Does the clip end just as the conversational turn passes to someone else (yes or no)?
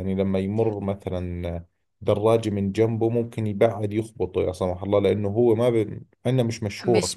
yes